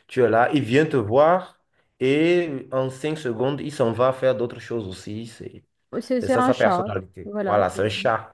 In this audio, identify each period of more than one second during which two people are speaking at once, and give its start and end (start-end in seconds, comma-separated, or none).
6.2-7.8